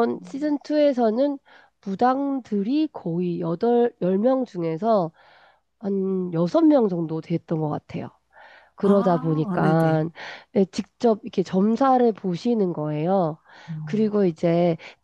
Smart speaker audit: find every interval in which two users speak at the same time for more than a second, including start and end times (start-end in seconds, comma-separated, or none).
8.8-10.0